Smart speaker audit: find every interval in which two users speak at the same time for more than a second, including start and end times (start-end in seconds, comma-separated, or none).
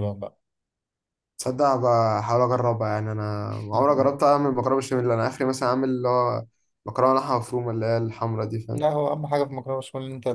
none